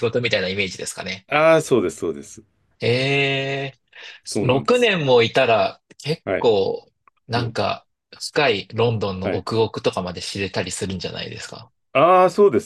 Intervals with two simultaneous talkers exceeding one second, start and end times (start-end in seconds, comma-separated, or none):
none